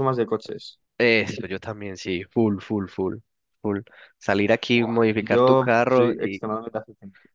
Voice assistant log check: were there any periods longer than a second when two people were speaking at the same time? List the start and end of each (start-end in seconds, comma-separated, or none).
4.7-6.4